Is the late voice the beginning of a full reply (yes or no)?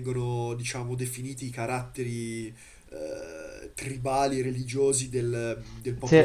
no